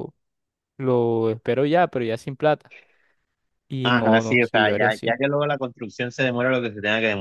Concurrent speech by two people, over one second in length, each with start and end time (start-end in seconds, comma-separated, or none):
3.8-5.2